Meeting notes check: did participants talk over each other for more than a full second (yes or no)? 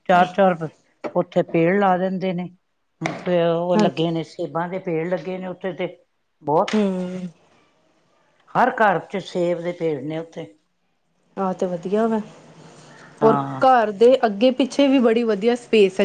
no